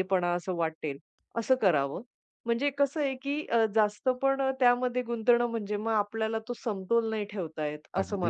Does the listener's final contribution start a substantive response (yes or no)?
yes